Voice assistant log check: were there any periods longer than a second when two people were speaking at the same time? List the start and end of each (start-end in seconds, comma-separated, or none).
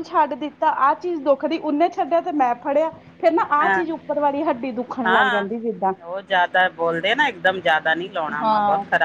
none